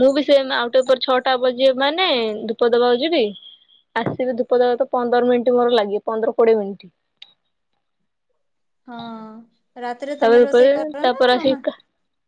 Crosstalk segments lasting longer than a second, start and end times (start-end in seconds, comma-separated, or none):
10.2-11.6